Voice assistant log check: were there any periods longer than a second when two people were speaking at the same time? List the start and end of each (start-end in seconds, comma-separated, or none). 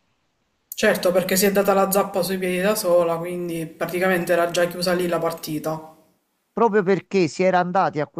none